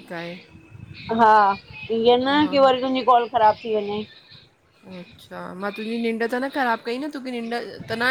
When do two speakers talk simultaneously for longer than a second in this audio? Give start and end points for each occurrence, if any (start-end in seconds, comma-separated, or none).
none